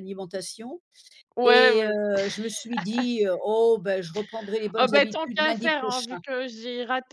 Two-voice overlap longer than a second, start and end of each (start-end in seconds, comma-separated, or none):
4.7-6.2